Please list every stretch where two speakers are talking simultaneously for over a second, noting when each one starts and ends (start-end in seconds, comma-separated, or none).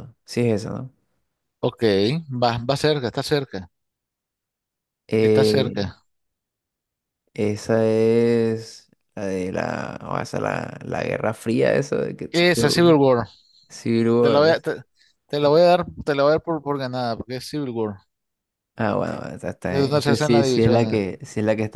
19.7-21.0